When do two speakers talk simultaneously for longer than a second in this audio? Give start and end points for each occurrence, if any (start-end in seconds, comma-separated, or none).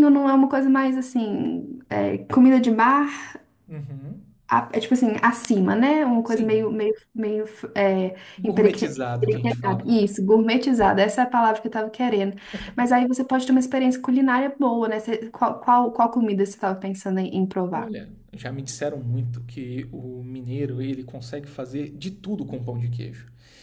8.4-9.9